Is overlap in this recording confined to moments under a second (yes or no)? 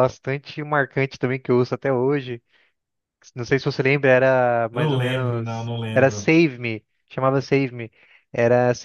no